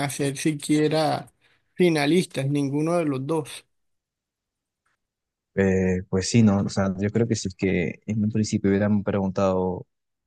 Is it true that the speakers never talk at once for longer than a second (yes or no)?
yes